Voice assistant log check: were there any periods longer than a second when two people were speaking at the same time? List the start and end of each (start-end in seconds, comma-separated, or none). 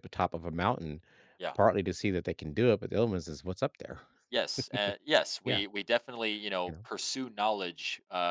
none